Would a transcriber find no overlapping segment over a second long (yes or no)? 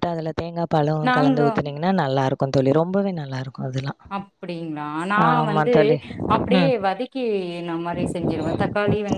yes